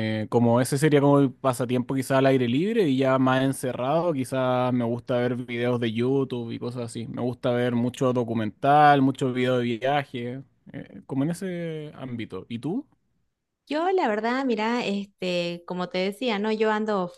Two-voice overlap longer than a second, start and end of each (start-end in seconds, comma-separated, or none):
none